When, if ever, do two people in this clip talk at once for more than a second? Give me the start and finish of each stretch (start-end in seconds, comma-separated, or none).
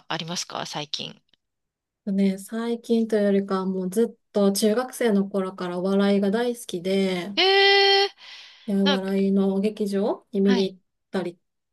none